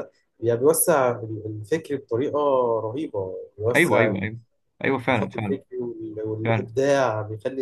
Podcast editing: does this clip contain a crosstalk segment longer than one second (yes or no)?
no